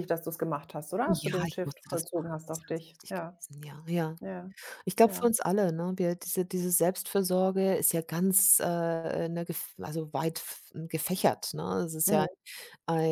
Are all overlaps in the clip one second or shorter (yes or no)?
no